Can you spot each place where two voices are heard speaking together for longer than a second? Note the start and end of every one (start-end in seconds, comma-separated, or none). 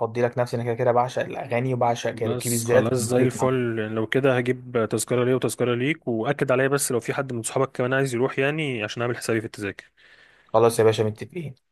2.1-3.5